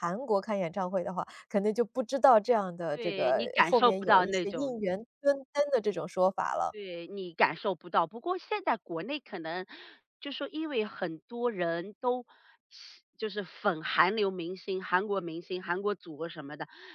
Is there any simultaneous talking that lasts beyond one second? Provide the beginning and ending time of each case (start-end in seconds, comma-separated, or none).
2.9-4.8